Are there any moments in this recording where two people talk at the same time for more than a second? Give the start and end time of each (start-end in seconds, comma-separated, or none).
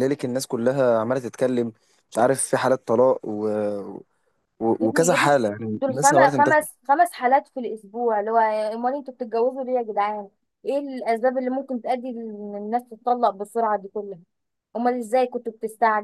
4.9-6.6